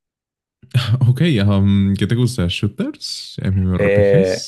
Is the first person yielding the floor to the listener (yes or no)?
yes